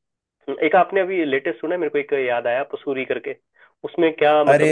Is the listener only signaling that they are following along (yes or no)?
no